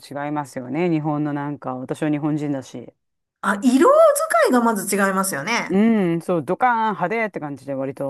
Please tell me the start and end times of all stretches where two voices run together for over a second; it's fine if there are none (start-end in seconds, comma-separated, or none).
none